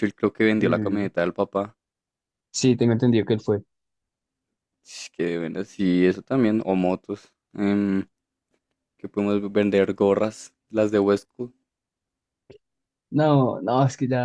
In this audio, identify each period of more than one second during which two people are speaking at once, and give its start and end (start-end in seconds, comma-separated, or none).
none